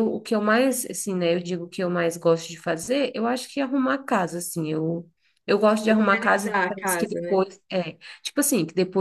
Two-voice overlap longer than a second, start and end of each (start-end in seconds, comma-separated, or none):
5.9-7.4